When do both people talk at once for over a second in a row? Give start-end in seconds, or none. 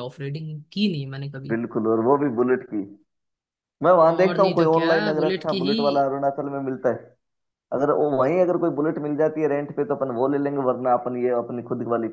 4.2-5.8